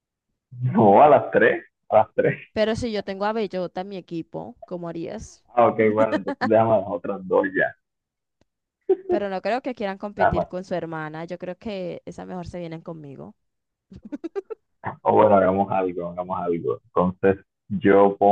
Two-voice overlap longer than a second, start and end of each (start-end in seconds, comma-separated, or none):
none